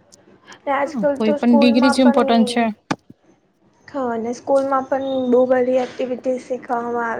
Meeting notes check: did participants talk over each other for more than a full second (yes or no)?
yes